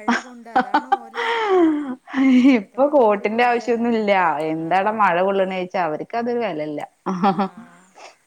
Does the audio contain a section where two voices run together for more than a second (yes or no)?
yes